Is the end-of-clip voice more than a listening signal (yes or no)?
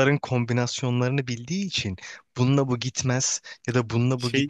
no